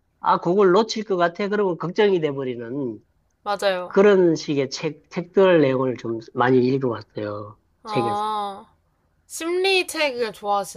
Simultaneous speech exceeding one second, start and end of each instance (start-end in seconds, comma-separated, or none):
none